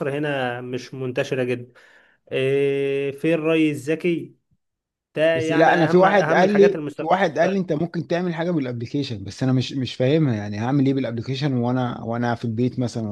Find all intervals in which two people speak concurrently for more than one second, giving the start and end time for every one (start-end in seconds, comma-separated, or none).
5.3-7.2